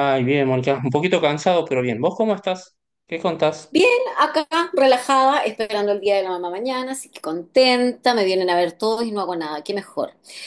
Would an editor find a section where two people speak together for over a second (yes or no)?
no